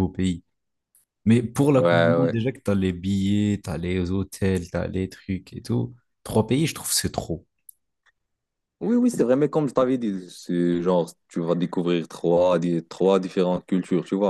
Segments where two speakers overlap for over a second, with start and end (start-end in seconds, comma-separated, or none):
none